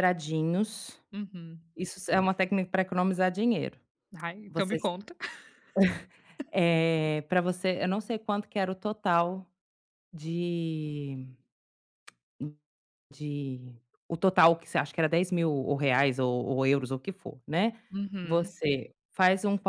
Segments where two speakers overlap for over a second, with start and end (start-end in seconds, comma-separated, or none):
none